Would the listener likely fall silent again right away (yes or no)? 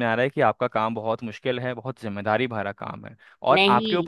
yes